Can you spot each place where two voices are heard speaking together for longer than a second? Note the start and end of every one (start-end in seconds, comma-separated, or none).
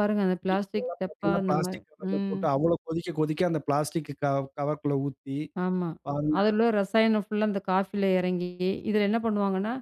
0.5-2.4